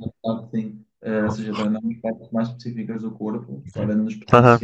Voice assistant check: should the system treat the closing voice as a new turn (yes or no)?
no